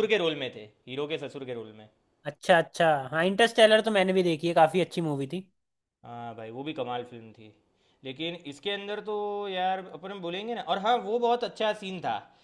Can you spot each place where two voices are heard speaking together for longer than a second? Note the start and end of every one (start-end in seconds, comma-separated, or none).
none